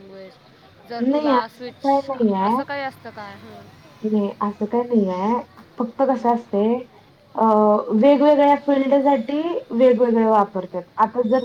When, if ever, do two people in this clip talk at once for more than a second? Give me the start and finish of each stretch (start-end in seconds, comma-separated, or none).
none